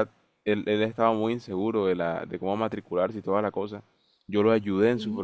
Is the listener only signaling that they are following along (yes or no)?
yes